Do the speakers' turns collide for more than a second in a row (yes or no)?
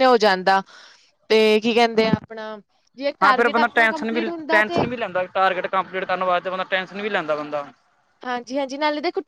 yes